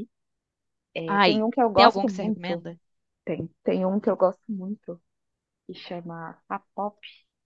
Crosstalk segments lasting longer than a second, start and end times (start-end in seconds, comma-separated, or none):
1.1-2.7